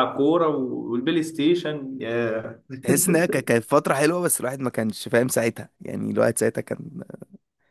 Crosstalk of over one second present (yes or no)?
no